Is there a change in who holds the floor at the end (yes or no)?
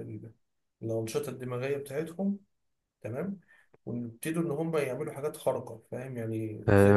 yes